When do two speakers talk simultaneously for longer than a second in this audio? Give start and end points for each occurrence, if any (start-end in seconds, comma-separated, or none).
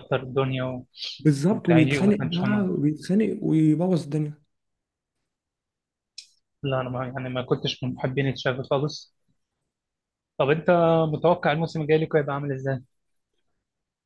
1.5-2.7